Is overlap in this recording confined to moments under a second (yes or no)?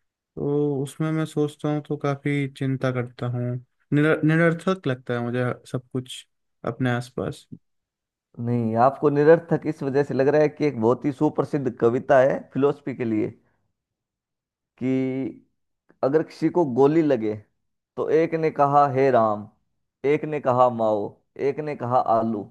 yes